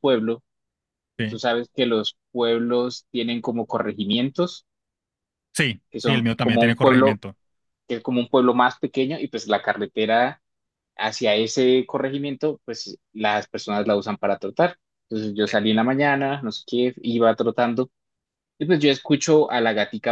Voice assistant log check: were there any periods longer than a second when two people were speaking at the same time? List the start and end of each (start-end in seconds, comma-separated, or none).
5.9-7.2